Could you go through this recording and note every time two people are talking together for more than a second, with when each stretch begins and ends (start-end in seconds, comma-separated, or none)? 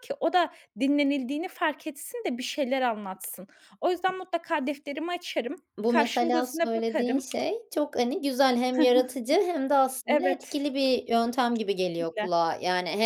5.8-7.2